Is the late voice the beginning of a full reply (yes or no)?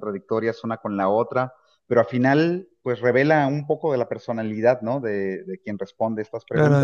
yes